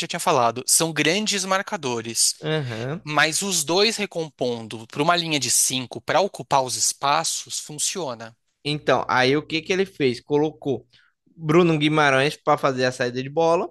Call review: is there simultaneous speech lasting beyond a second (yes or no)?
no